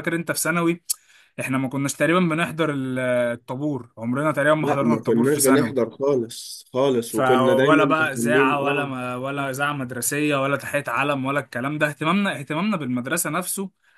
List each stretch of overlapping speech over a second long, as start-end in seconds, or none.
4.6-5.9, 7.0-8.9